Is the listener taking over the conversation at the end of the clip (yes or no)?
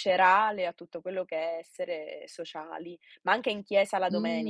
yes